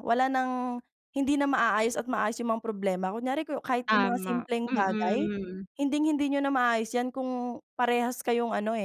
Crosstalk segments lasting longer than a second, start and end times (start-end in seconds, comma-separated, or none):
3.9-5.2